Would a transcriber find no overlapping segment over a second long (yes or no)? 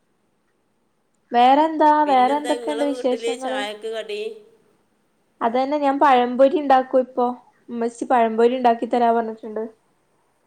no